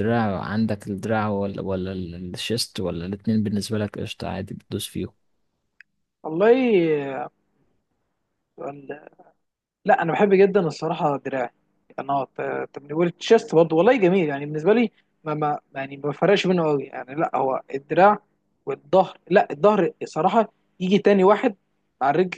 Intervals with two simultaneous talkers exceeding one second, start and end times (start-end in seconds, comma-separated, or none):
none